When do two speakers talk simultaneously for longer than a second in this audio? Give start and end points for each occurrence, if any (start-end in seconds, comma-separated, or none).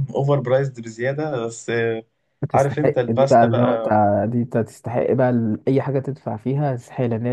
2.5-4.0